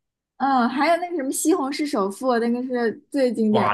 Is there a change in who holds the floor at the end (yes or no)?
yes